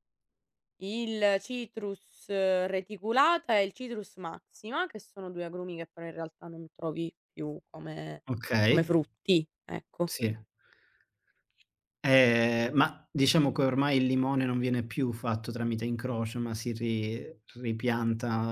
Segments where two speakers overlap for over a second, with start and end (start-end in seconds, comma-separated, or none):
none